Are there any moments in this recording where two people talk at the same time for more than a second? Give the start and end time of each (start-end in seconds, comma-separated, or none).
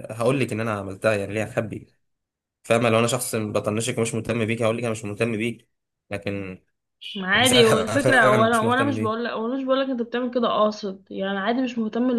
7.3-9.2